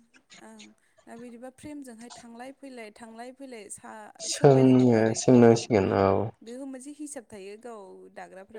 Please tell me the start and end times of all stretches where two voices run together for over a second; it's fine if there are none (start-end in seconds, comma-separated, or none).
4.3-5.6